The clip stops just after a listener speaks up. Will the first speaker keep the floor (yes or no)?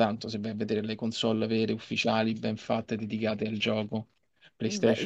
no